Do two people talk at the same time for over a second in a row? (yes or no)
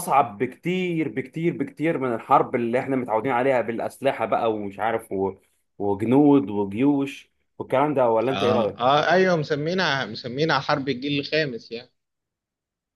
no